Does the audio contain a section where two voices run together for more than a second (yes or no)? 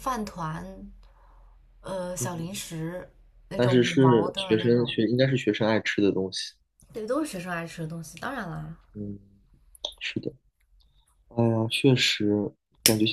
yes